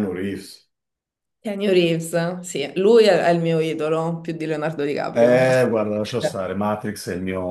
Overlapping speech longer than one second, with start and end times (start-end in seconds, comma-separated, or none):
5.1-6.5